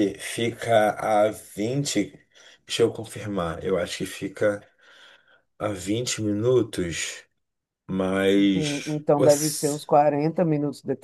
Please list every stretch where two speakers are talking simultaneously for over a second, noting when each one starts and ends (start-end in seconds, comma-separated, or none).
8.5-9.8